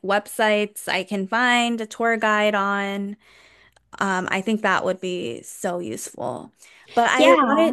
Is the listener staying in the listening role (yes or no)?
yes